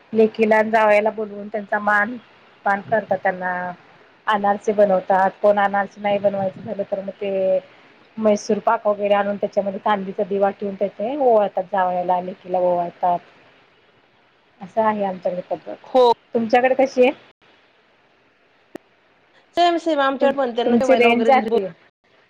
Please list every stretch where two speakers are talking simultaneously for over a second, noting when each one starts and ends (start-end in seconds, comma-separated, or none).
20.0-21.6